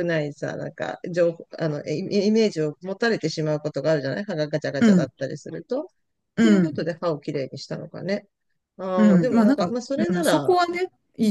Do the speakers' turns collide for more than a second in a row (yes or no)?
yes